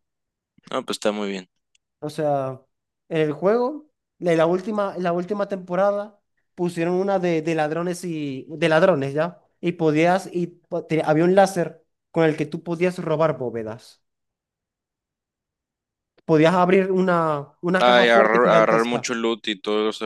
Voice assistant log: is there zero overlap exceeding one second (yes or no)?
no